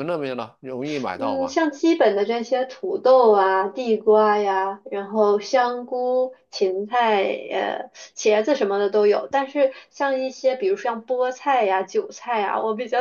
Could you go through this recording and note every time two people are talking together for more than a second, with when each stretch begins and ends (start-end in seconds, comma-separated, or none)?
none